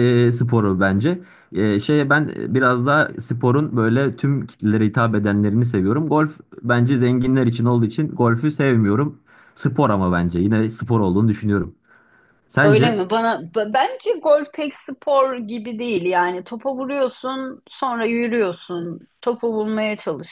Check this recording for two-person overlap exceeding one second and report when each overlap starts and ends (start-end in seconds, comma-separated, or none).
none